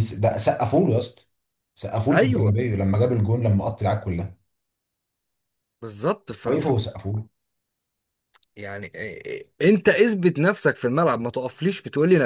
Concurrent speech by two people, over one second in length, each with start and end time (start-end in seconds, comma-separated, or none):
none